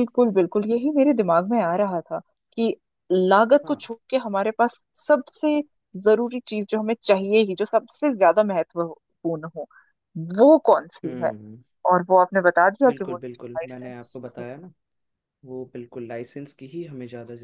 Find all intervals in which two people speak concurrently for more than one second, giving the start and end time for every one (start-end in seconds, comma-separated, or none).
12.9-14.4